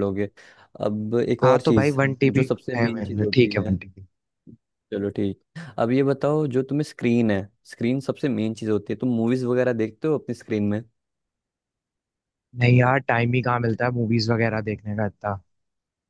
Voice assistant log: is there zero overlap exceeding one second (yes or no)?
no